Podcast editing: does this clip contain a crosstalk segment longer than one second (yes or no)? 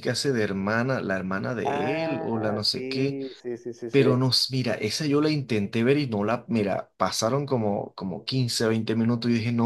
yes